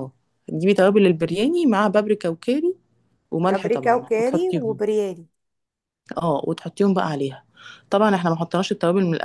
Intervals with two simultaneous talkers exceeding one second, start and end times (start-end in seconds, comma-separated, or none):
3.4-4.8